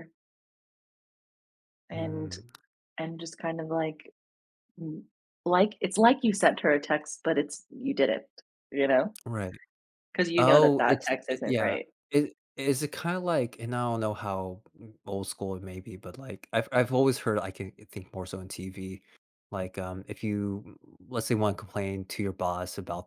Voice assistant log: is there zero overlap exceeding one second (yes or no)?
no